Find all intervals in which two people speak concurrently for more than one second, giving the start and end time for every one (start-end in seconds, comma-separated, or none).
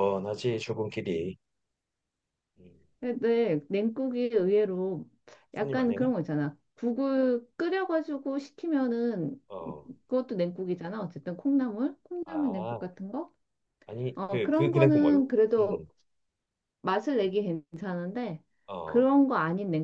14.1-15.8